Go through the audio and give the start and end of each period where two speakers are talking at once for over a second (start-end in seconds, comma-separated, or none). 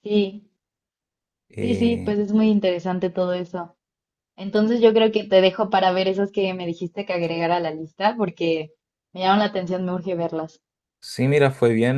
none